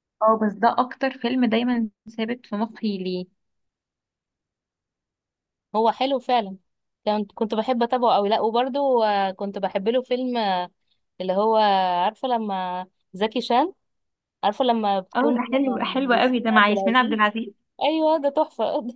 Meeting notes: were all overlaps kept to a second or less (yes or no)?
no